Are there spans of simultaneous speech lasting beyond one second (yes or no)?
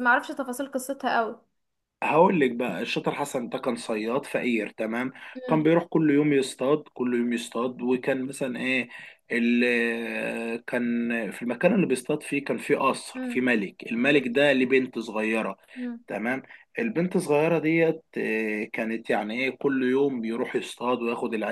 no